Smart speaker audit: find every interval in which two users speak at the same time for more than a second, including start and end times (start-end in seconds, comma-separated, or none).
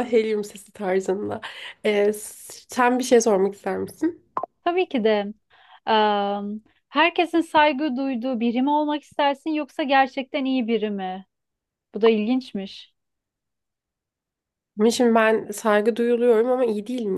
none